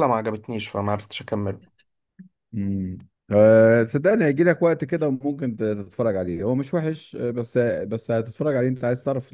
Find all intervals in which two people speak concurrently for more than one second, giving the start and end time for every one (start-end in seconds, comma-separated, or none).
none